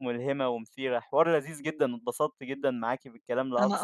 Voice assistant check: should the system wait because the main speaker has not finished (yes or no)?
yes